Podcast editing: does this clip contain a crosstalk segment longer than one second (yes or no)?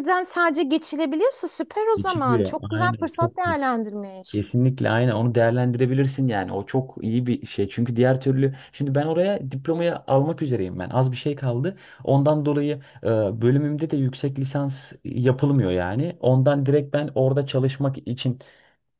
yes